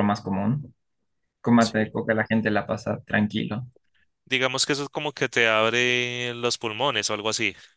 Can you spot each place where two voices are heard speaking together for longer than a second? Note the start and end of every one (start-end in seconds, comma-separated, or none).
none